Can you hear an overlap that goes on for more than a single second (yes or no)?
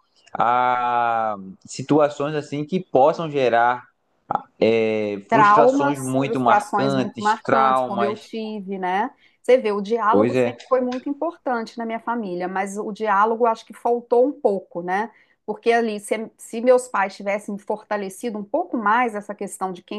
yes